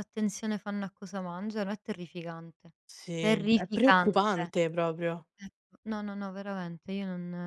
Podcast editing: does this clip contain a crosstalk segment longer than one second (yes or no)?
yes